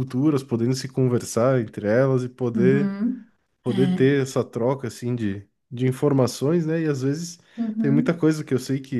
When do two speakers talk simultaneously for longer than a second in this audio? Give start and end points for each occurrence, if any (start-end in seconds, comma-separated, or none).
none